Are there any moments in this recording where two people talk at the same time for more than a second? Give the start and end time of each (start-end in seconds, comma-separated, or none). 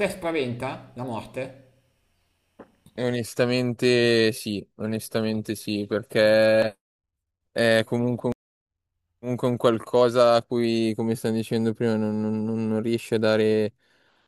none